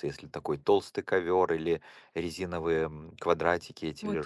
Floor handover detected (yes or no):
yes